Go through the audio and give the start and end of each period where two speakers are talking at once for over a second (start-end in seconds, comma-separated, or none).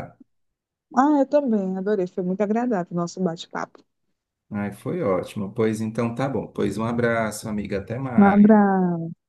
none